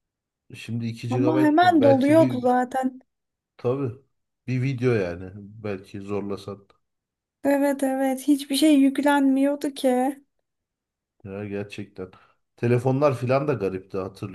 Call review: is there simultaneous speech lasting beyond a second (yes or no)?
yes